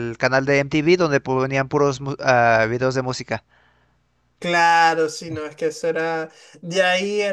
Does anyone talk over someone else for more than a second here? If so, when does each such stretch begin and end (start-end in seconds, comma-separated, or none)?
none